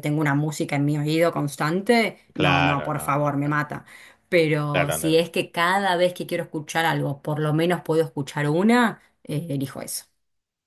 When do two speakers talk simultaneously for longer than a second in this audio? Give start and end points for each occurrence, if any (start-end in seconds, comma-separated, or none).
2.3-3.6